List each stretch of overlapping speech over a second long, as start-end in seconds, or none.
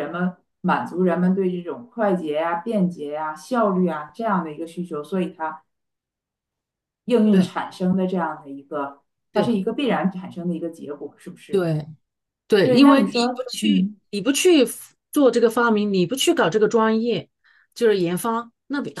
12.6-14.0